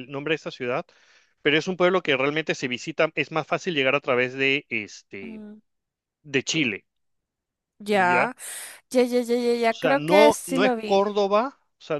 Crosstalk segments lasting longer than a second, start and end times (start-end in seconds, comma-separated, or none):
9.7-11.1